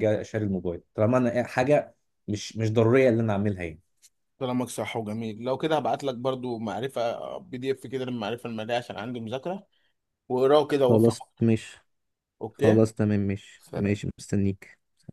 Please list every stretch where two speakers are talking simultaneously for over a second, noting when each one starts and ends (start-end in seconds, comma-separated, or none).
none